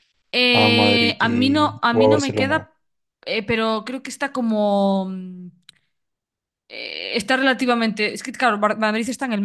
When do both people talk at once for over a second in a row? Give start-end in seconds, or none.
0.5-2.6